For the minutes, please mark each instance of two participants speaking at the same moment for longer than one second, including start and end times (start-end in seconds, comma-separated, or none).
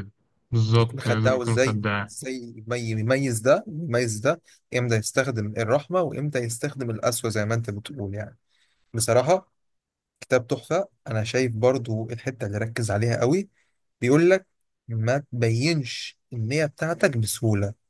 0.7-2.1